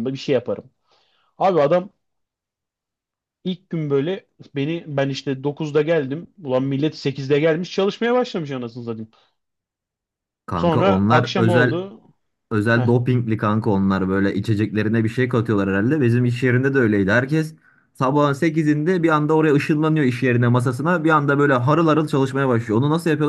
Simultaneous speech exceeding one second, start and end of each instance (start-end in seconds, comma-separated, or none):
10.5-11.8